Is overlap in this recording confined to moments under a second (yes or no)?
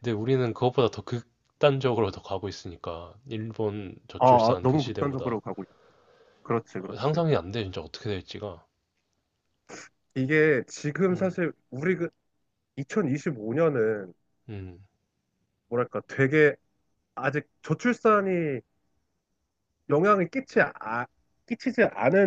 no